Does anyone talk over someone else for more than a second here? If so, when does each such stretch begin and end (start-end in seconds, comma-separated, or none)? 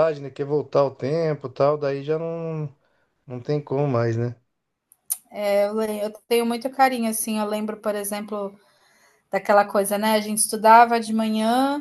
none